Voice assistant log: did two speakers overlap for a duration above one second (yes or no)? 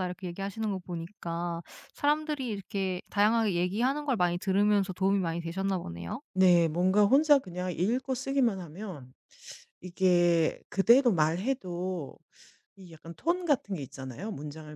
no